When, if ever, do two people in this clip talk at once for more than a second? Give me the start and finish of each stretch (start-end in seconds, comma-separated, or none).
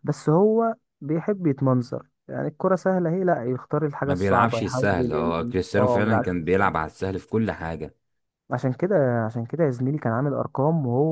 4.0-6.3